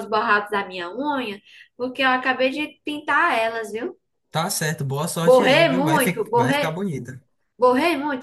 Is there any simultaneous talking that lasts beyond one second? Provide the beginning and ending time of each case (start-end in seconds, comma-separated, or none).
5.2-6.7